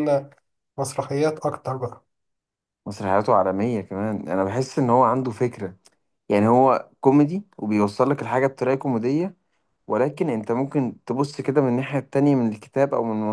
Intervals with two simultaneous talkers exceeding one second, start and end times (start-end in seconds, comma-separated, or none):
none